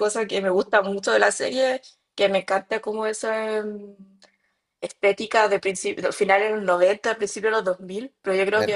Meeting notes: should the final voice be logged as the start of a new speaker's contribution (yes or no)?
no